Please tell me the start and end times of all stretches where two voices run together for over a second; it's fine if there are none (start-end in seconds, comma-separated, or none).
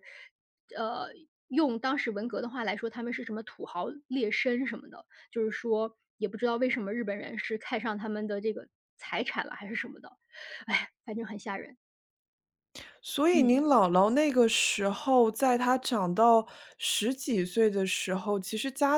none